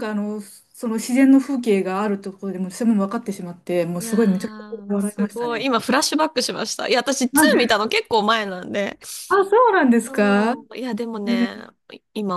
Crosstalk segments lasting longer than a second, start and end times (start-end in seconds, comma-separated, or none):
4.0-5.7